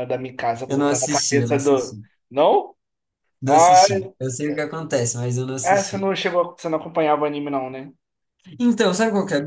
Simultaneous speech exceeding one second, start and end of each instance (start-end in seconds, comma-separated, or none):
0.7-2.0